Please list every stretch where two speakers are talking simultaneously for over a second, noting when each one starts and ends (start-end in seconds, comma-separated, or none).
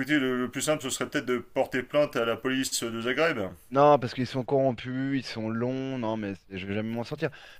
none